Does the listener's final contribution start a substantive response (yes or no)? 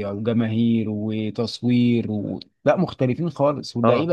yes